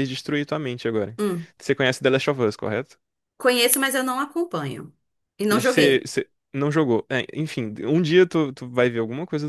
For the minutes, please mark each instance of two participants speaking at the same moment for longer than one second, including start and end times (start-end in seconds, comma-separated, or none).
none